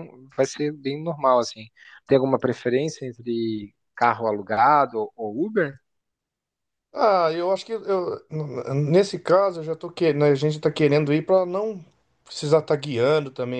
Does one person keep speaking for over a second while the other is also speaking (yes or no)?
no